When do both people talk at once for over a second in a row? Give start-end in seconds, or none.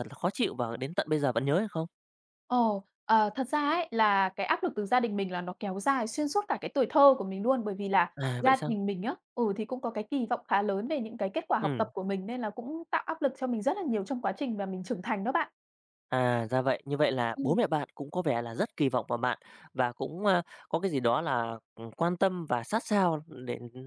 none